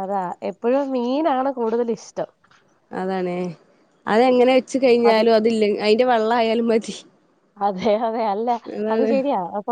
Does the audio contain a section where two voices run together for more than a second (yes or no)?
no